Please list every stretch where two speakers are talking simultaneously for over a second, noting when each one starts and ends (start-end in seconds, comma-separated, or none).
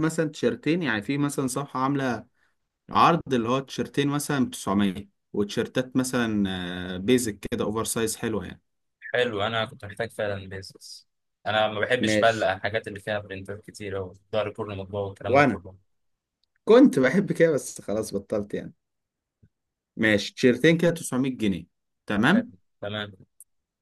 none